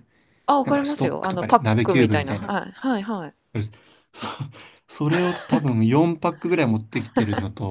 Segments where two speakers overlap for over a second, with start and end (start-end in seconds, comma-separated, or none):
0.6-2.5